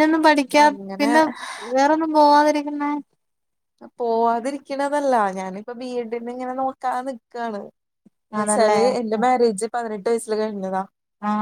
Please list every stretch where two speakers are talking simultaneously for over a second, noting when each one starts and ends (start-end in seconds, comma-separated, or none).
none